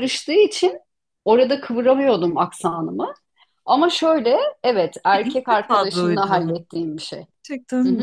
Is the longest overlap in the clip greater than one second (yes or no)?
yes